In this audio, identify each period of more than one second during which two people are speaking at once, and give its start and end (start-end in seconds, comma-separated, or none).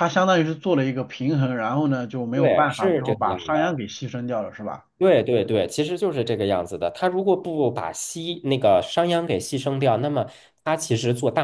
2.3-3.8